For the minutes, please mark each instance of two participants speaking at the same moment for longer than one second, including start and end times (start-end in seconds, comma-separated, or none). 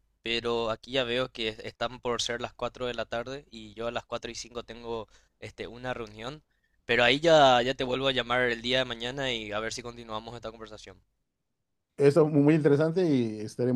none